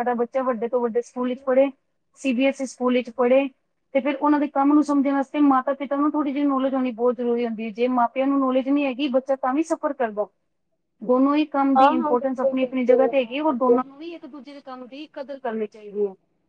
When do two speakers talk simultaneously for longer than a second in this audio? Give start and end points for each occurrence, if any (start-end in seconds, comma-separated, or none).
11.8-13.8